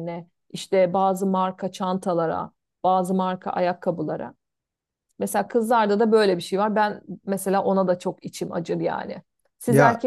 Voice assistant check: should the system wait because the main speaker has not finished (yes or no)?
yes